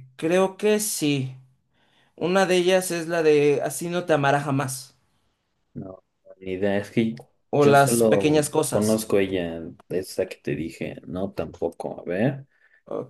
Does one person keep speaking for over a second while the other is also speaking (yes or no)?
yes